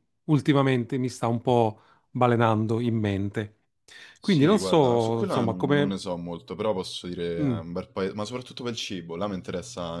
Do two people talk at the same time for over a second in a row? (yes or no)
yes